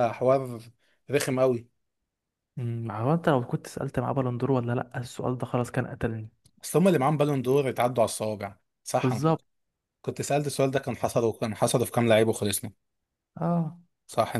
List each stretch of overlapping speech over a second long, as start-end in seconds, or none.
none